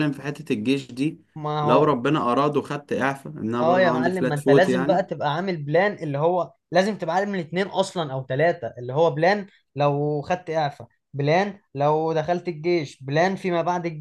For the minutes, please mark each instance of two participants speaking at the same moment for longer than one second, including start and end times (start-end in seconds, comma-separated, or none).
3.6-5.0